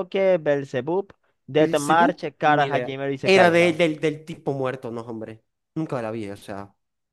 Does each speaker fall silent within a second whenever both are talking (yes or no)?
no